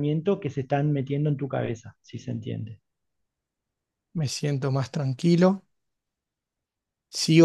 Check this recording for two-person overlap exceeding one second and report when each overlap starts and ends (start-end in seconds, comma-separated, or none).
none